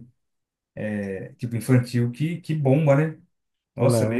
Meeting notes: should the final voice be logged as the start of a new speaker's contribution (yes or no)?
no